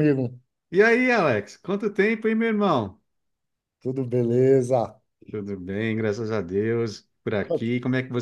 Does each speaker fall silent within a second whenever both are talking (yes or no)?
yes